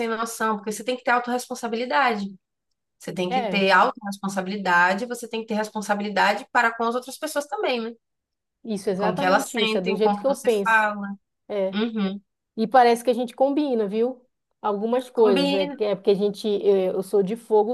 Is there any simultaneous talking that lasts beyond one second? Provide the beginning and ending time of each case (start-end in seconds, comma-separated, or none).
9.0-10.9